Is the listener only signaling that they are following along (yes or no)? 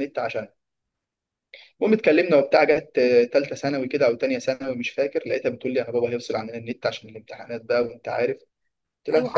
no